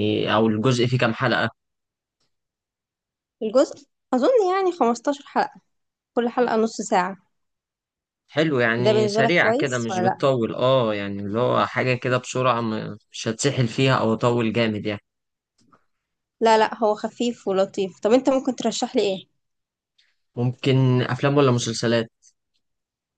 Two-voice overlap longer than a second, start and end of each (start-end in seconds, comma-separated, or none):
8.8-10.2